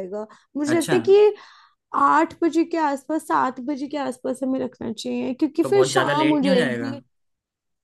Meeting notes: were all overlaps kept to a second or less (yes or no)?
no